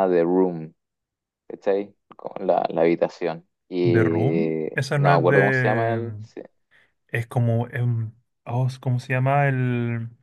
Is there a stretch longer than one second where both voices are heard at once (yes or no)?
yes